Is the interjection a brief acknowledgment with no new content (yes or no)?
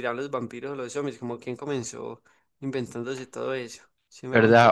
no